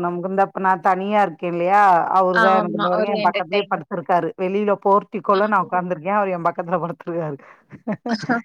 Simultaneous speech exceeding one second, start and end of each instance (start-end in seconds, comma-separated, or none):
2.4-3.9